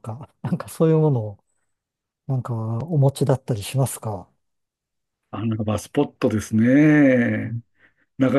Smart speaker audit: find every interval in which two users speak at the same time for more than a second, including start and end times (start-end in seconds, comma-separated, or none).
none